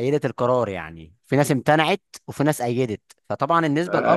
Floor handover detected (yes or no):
yes